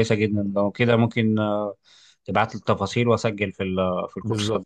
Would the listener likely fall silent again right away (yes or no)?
no